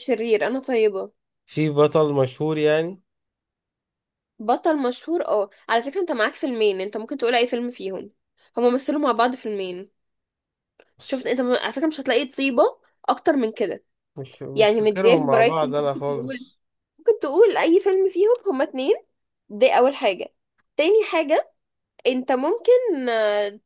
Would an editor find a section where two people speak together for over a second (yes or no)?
yes